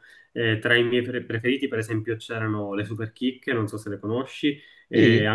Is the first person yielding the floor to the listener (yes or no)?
no